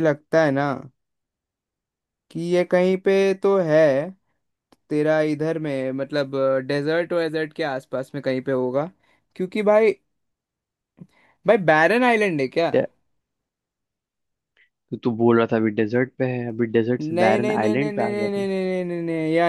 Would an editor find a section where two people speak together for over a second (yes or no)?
yes